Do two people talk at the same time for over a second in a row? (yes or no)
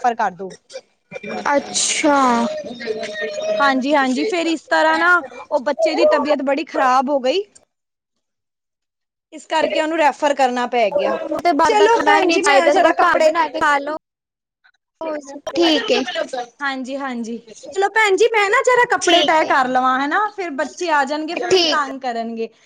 yes